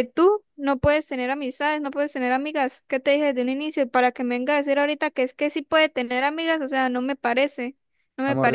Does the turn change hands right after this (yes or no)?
yes